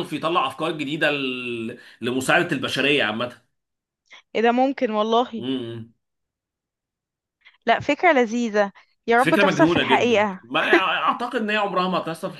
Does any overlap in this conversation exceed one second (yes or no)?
yes